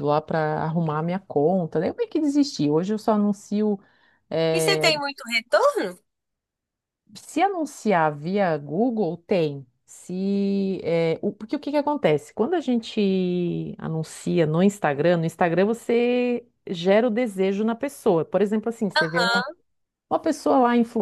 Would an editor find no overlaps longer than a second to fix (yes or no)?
yes